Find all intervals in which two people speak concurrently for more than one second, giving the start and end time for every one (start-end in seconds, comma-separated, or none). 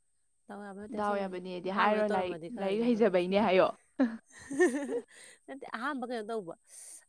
1.0-3.1